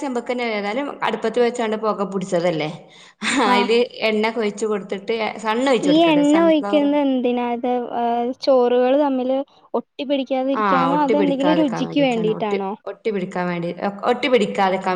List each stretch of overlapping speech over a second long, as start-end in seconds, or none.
10.6-12.6